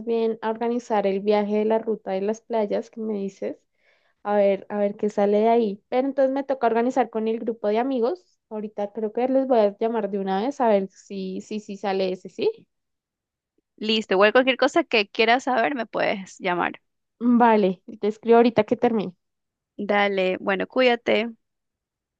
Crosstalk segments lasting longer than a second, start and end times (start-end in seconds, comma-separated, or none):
none